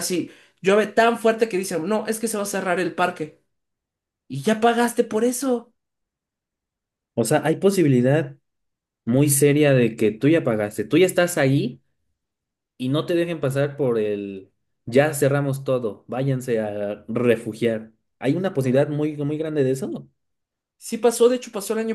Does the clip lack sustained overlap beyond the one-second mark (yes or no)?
yes